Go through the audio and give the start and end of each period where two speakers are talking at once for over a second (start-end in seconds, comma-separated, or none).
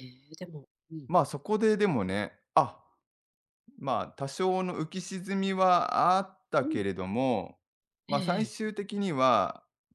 none